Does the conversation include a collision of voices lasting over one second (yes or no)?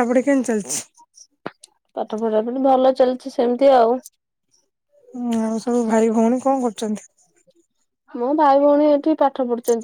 no